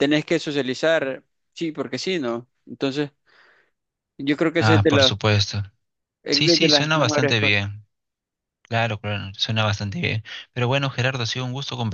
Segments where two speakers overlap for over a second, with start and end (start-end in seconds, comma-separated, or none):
6.3-7.6